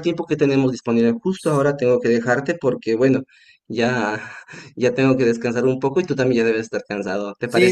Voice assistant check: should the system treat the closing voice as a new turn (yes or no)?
yes